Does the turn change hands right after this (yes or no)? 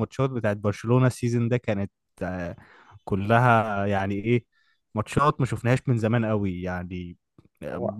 no